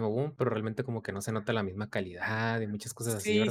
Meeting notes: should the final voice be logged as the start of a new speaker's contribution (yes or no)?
yes